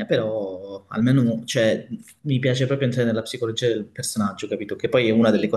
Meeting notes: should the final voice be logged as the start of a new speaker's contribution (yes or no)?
no